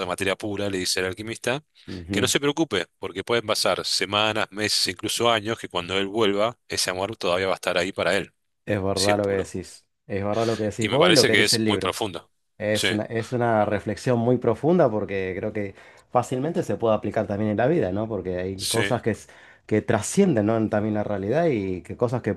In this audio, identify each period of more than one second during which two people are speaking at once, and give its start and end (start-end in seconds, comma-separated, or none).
10.8-12.0